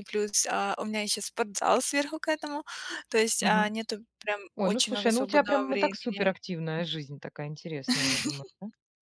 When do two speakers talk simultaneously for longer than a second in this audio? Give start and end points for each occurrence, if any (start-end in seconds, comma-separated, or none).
4.6-6.3